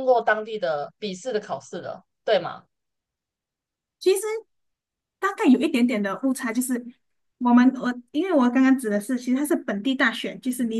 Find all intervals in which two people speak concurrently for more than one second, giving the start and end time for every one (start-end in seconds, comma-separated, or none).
none